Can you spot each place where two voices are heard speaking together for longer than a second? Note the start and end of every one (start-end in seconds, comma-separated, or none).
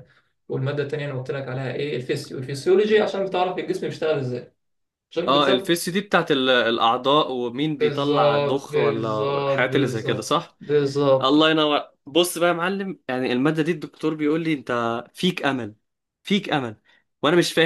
7.8-10.6